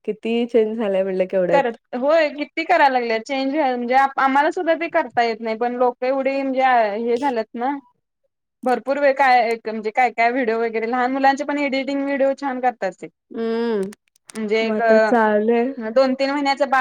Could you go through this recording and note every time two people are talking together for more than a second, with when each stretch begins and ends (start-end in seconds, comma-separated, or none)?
none